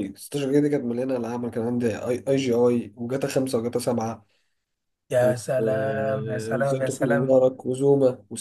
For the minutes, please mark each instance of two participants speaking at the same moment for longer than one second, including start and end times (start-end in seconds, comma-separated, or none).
5.2-7.4